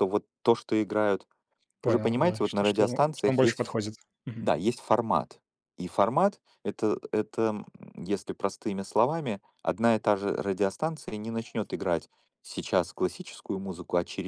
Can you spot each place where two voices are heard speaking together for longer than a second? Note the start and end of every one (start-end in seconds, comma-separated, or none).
1.8-3.6